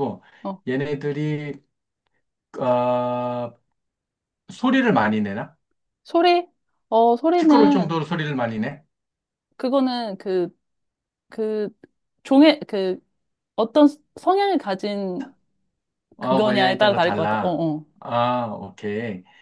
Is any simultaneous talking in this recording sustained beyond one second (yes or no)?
yes